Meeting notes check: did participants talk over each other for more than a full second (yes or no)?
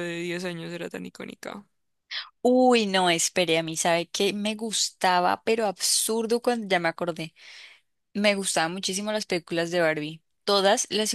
no